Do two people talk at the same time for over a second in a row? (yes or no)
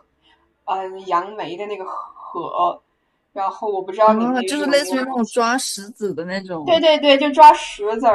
yes